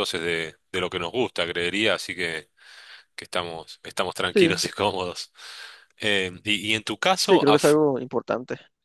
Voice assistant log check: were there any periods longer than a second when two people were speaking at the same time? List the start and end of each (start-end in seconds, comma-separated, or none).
none